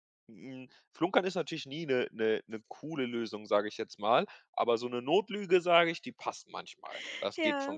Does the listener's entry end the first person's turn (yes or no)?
yes